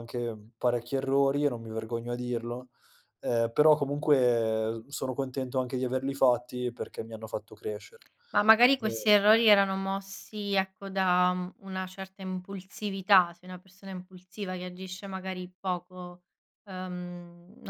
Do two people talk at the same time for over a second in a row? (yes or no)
no